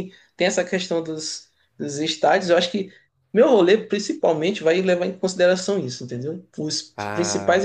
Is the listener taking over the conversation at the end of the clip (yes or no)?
no